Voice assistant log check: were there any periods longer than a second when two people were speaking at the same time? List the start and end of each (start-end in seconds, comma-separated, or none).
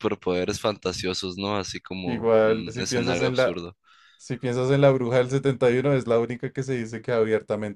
2.0-3.5